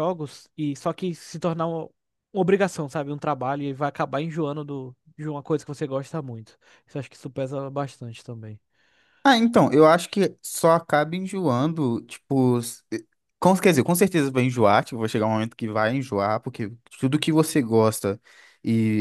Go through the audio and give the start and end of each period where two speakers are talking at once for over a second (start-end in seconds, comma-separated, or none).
none